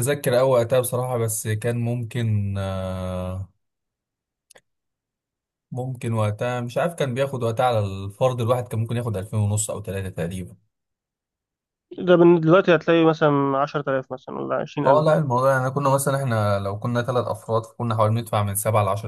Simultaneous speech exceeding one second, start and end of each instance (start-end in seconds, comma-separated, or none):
none